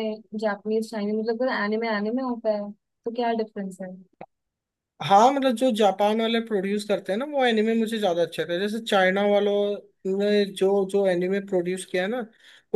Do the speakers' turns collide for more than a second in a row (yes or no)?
no